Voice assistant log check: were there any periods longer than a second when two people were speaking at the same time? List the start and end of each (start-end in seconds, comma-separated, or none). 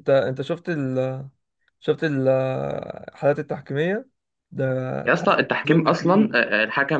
5.1-6.4